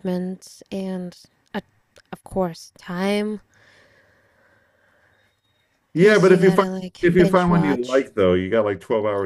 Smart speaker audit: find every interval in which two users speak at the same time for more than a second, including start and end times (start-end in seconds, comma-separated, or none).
6.0-8.1